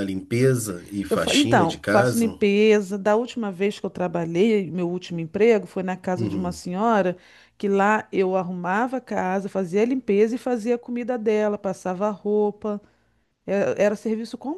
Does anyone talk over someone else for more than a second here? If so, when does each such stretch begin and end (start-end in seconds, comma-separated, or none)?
1.1-2.4